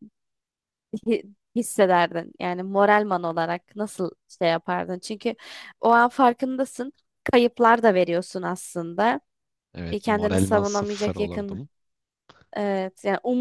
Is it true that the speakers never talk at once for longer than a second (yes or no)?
no